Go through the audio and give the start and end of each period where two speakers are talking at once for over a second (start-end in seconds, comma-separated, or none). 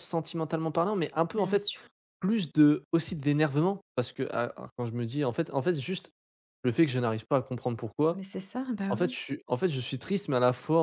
none